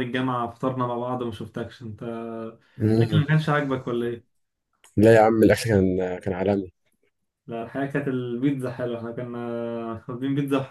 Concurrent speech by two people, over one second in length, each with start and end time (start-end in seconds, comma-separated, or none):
none